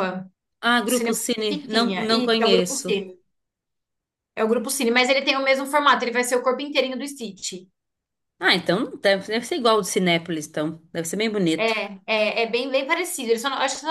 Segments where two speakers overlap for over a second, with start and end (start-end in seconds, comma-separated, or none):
0.9-2.9